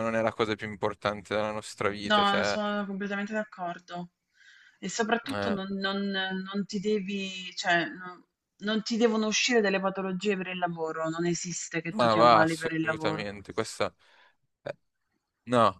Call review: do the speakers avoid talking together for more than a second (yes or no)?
no